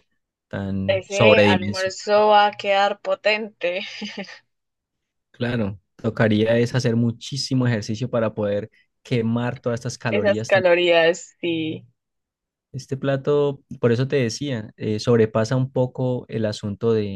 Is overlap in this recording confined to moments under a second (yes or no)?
no